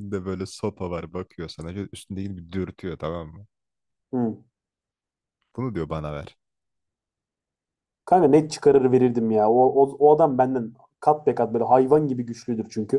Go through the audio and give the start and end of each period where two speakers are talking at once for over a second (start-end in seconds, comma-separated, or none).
none